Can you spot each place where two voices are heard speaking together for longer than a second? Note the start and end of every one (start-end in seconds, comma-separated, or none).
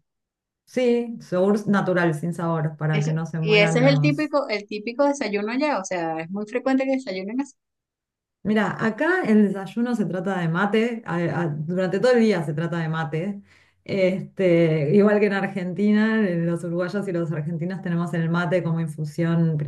2.9-4.3